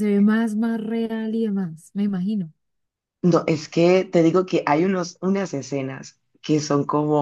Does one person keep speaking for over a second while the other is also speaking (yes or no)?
no